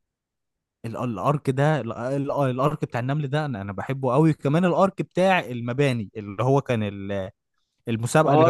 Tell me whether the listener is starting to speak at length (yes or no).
yes